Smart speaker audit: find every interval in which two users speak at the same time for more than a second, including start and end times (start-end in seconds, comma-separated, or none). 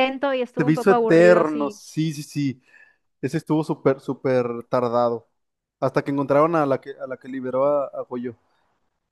0.6-1.8